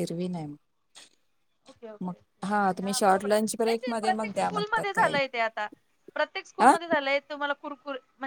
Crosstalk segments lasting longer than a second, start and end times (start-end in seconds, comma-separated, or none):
2.8-5.2